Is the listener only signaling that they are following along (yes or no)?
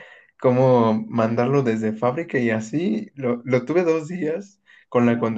yes